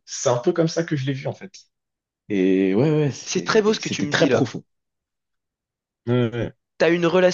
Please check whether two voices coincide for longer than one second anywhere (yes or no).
yes